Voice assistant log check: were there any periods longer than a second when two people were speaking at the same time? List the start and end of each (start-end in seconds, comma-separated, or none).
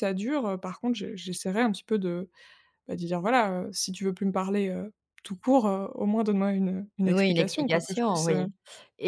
7.1-8.4